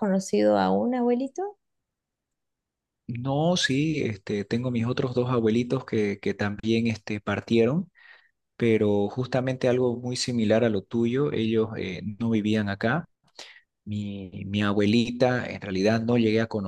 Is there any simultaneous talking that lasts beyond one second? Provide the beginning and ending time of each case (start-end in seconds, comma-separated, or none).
none